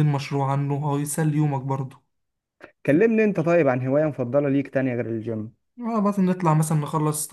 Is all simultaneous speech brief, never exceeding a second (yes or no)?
yes